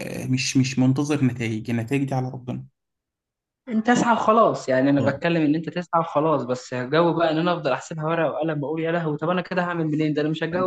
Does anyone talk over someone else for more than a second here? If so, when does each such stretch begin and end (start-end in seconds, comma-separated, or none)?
none